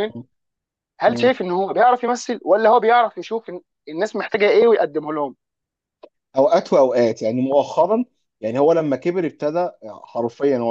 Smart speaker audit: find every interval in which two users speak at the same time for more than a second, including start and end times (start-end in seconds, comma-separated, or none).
none